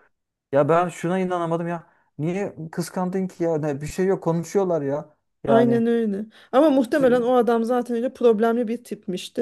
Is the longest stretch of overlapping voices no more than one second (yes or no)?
yes